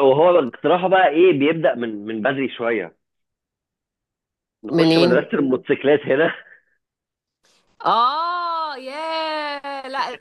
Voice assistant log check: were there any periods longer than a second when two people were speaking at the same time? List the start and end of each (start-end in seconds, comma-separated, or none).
none